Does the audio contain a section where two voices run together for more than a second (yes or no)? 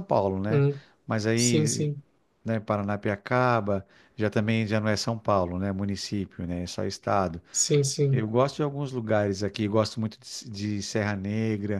no